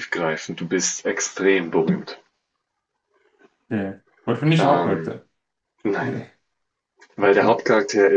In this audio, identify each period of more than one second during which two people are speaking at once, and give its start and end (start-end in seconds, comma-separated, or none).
none